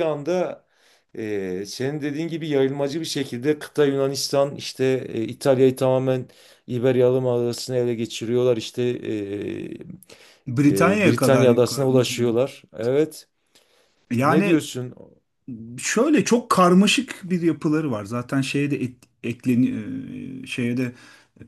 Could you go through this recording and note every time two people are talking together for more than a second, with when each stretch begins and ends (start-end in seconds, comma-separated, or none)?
10.7-11.9